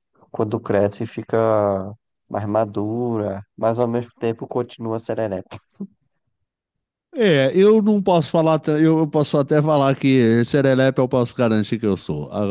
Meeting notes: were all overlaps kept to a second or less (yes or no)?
yes